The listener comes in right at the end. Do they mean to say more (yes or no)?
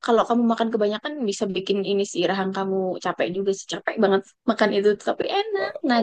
yes